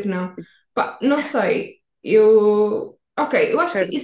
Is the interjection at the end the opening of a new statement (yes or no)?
no